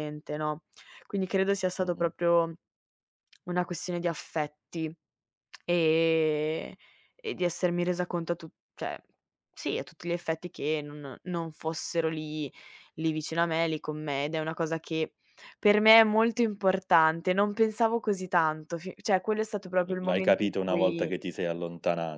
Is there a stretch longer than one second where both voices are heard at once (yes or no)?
yes